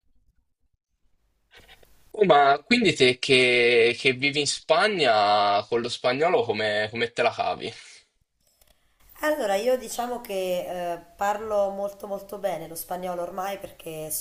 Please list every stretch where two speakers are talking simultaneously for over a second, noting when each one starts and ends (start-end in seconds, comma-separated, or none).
none